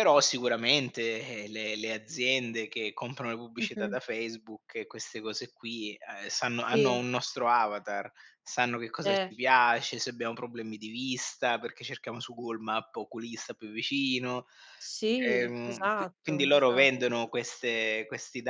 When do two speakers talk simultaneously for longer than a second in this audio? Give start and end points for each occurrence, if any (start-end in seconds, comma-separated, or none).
15.3-16.9